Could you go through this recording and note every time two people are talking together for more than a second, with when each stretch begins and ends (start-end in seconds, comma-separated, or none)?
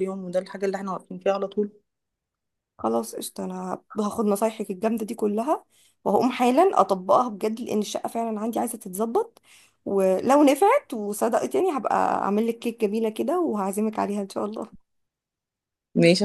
none